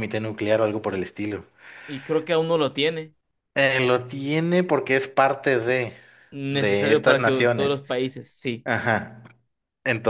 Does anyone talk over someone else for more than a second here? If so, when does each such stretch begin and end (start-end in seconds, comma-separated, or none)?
6.5-7.8